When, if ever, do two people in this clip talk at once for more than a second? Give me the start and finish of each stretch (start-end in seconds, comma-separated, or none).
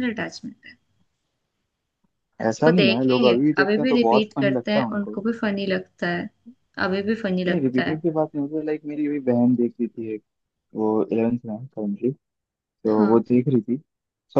2.7-5.2